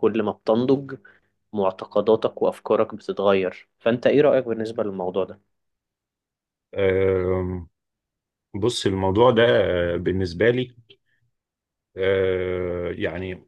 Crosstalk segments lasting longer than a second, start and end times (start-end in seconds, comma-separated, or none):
none